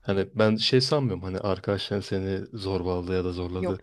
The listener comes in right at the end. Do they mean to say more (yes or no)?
no